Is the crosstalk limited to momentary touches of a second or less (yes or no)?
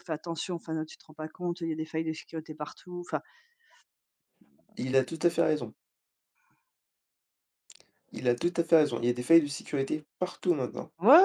yes